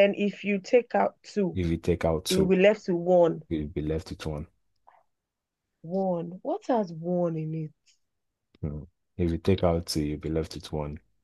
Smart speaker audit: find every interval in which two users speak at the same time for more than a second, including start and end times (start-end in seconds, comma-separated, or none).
none